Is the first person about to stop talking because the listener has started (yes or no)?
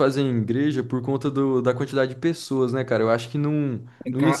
yes